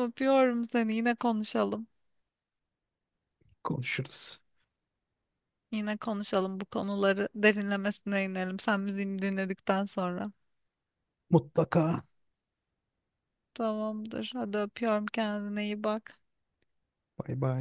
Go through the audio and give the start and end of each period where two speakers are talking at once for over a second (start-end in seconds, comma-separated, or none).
none